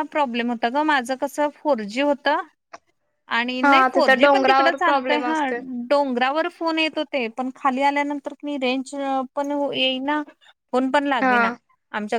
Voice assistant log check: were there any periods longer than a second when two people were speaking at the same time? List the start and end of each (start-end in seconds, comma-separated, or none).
3.6-5.4